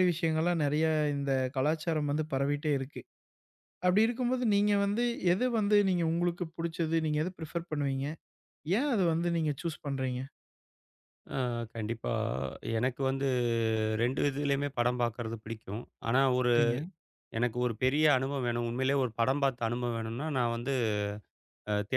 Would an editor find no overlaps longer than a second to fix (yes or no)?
yes